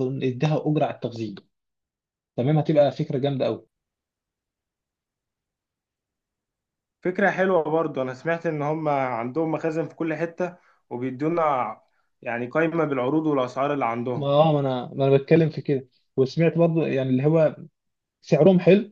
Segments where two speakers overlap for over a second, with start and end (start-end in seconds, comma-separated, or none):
none